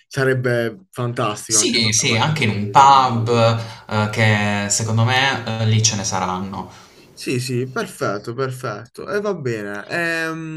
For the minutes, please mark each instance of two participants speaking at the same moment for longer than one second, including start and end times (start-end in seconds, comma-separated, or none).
1.5-3.2